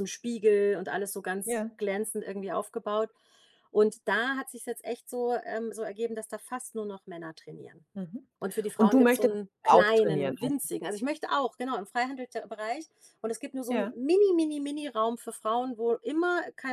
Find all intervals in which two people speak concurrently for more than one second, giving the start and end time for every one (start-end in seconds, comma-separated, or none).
8.8-10.6